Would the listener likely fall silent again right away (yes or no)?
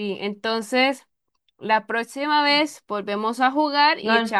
yes